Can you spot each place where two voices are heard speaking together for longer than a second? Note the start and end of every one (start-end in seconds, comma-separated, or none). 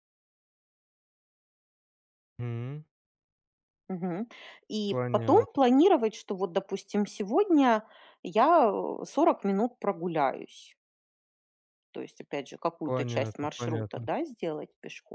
12.8-14.1